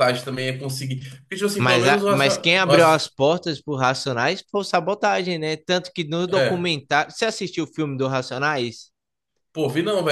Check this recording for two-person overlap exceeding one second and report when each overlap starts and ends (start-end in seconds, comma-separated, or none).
1.6-3.0